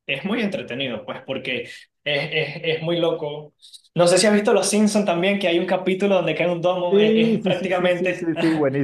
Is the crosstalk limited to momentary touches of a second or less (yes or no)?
no